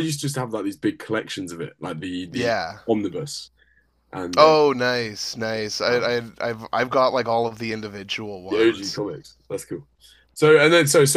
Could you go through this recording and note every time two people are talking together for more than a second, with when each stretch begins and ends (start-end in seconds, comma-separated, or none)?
none